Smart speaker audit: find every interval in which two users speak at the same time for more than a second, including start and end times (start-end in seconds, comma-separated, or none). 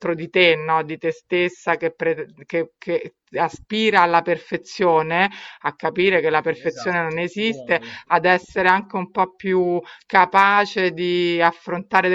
6.3-8.0